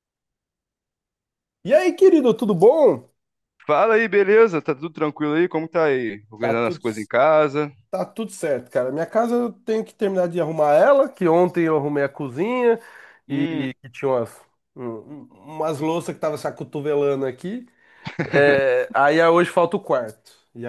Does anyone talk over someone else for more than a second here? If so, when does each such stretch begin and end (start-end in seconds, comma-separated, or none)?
none